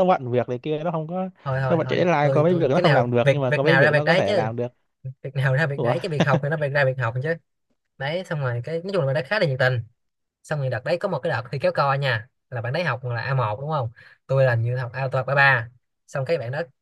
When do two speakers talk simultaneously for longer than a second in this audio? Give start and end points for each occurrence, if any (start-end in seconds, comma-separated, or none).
1.7-4.5